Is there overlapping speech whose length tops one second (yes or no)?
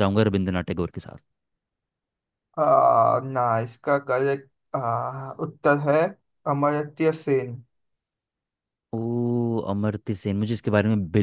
no